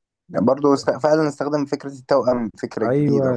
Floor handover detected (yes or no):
yes